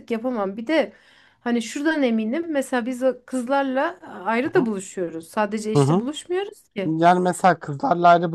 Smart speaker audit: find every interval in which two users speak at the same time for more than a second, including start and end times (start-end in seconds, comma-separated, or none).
none